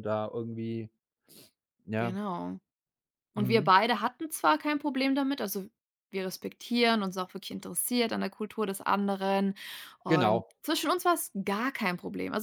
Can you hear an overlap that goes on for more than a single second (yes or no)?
no